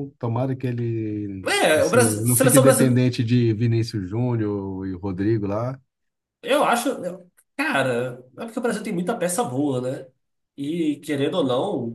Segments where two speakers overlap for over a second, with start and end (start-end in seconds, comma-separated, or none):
1.4-3.0